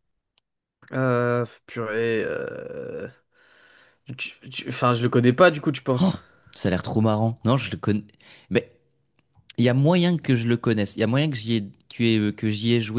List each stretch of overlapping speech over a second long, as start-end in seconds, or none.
none